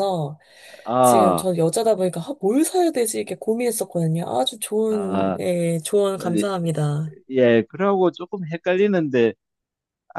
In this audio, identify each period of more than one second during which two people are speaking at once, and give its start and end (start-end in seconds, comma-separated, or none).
none